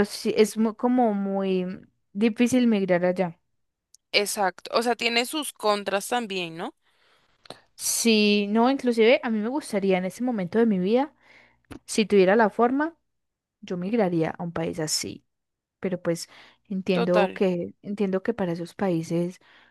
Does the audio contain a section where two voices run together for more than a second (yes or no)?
no